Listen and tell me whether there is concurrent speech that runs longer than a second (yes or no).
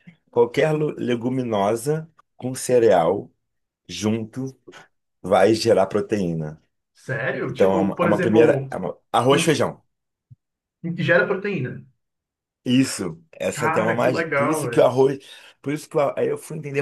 yes